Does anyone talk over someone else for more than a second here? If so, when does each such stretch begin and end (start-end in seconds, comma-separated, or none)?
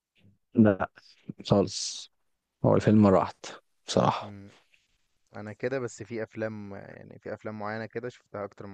none